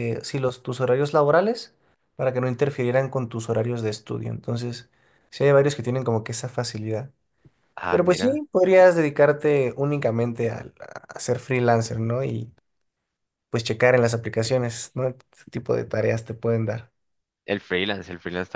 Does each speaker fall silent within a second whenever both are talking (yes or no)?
yes